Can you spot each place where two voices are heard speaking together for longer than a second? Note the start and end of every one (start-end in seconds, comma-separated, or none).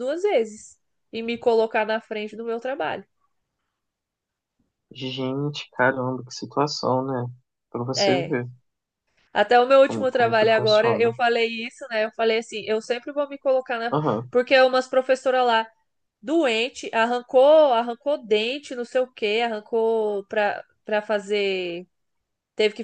9.8-11.1